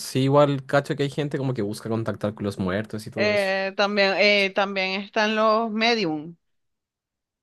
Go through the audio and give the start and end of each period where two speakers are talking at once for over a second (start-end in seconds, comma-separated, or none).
none